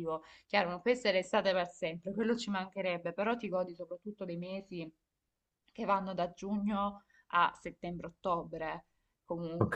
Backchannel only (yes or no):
no